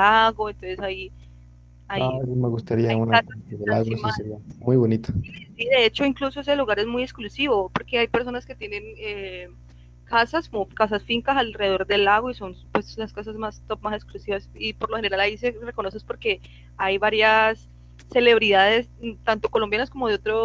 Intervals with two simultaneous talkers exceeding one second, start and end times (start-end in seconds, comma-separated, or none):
2.9-4.2